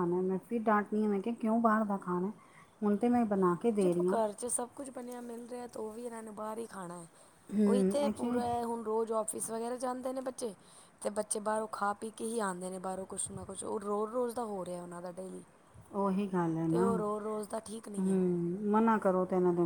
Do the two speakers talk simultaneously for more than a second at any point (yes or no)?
no